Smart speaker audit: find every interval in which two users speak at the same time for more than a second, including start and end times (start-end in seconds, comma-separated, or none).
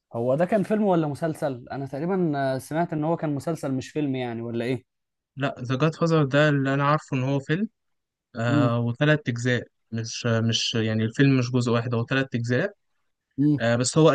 none